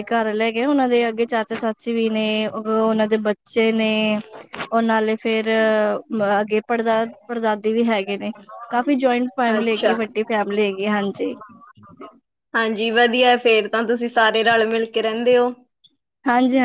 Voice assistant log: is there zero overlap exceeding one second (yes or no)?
yes